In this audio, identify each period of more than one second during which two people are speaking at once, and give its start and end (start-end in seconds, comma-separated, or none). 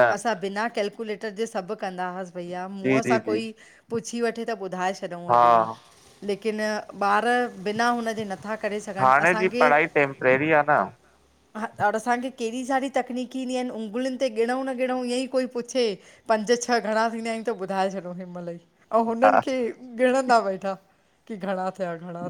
none